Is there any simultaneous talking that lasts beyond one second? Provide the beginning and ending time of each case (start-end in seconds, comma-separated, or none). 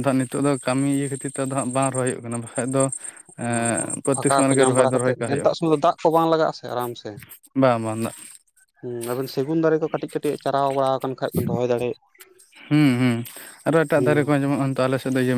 3.5-5.5